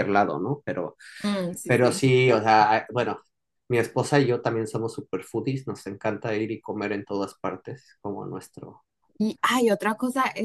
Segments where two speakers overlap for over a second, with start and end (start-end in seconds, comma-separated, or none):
none